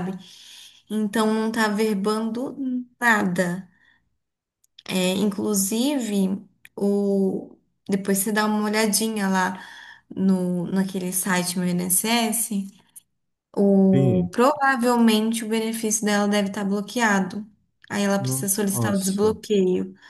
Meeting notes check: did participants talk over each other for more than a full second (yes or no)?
yes